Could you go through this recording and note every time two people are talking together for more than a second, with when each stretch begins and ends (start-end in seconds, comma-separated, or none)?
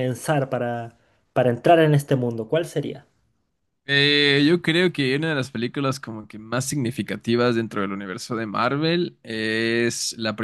none